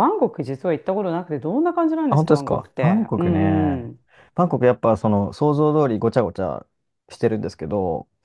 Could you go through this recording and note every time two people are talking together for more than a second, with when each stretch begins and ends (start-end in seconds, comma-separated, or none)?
2.1-3.9